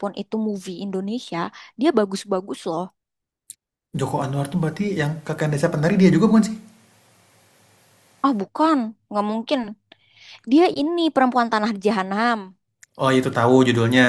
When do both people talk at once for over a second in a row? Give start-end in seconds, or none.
none